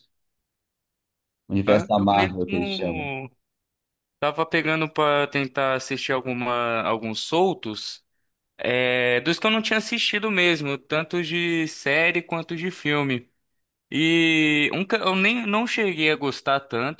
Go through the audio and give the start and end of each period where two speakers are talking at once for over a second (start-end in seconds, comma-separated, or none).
1.7-3.1